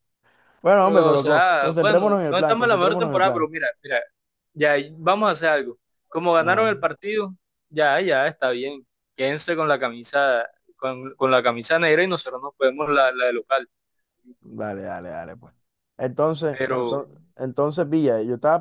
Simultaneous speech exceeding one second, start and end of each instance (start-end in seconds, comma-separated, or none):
0.8-3.5